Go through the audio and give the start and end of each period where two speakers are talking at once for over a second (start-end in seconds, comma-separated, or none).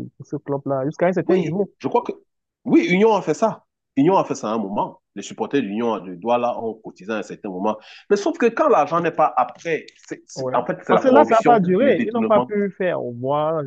10.3-12.6